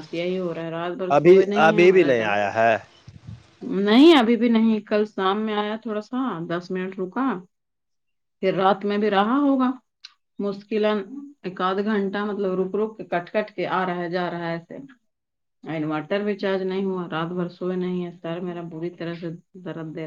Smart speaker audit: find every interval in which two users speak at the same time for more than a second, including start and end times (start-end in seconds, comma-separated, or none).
1.2-2.8